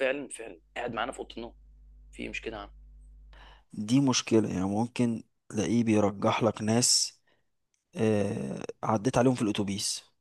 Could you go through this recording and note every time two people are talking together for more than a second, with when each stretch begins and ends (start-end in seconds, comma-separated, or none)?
none